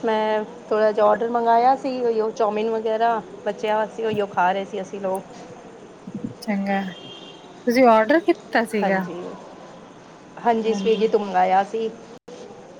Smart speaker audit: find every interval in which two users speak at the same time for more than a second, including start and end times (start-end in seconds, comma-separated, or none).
none